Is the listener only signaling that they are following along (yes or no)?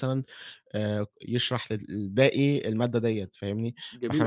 no